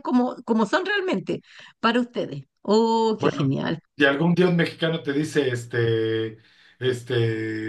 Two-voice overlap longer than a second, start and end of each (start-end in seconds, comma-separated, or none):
none